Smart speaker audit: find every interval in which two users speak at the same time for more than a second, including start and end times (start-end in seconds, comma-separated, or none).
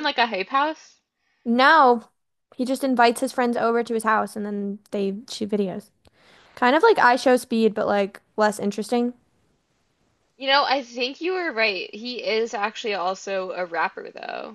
none